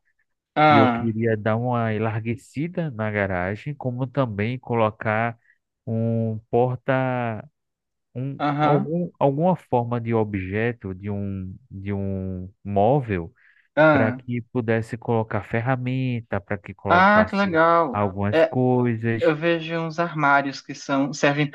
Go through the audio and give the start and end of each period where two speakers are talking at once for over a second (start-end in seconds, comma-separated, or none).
16.9-18.5